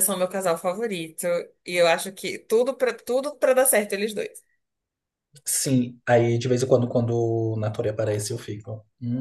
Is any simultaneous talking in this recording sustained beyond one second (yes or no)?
no